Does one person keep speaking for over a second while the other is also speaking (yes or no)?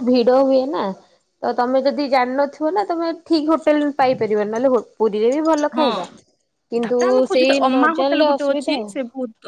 yes